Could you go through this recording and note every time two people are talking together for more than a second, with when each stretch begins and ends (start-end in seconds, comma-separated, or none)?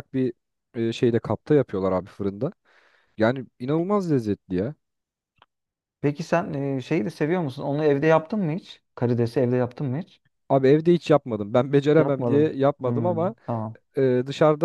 12.0-13.3